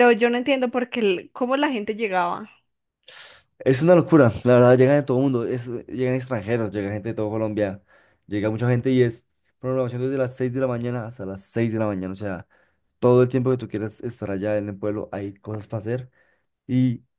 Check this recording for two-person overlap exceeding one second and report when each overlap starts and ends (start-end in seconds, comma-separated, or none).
none